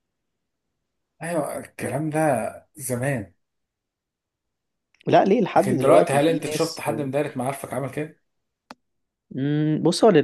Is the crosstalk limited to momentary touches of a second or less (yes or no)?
no